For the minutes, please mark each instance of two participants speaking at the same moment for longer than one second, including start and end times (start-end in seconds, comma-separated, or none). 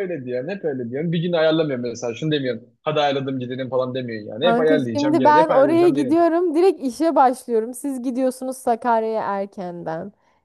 4.4-6.3